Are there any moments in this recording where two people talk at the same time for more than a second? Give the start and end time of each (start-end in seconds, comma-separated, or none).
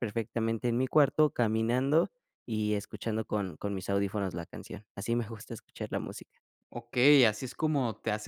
none